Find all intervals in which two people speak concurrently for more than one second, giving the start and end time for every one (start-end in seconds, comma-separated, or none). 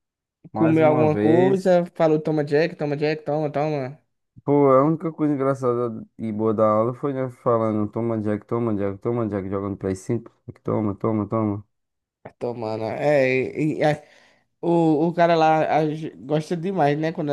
0.5-1.7